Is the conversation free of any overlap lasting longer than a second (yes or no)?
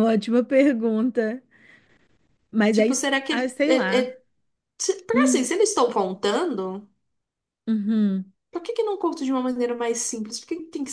no